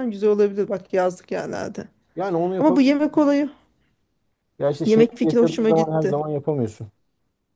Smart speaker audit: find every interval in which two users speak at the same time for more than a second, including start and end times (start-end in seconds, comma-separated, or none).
4.8-6.2